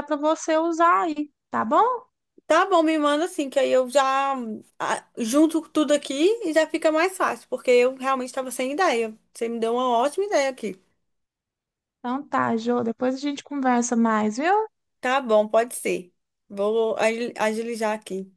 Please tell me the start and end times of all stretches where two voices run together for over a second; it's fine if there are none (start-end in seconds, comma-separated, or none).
none